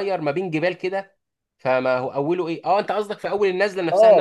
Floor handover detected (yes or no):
yes